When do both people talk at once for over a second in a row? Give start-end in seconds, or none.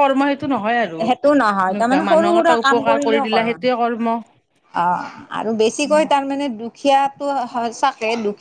1.1-2.5